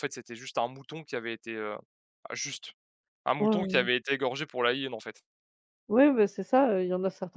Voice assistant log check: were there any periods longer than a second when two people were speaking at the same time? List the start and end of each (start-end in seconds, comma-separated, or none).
none